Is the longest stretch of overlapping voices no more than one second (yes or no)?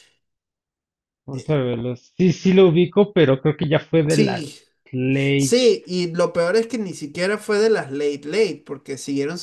yes